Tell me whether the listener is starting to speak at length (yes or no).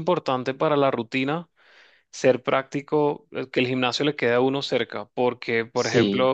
no